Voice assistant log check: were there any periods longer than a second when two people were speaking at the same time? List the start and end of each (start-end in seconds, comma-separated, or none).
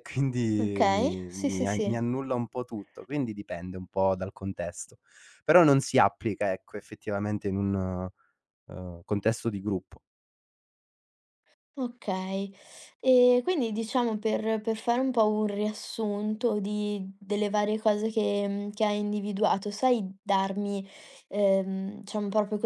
0.6-2.0